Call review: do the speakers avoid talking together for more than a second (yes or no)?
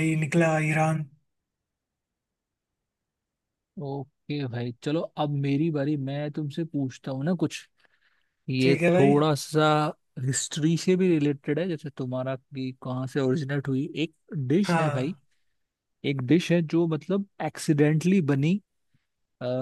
yes